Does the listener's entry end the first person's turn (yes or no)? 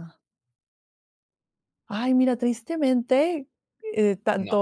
no